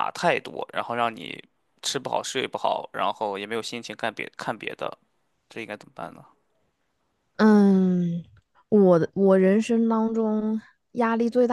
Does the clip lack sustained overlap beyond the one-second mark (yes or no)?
yes